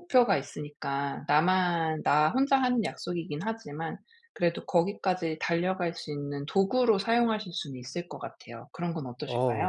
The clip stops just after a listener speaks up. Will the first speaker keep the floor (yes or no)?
no